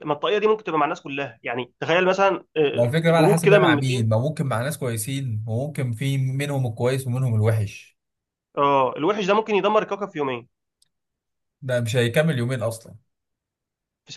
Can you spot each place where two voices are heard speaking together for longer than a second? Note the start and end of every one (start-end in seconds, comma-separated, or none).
2.7-4.1